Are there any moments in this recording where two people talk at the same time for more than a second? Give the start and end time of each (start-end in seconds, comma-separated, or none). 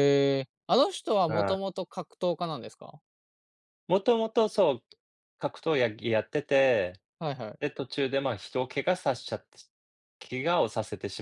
none